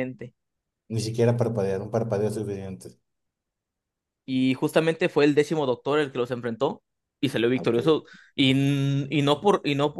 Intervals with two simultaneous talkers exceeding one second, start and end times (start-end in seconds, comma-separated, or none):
none